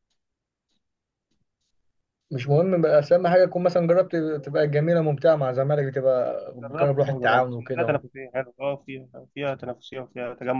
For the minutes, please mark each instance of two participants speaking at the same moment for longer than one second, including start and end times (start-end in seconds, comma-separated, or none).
6.6-8.0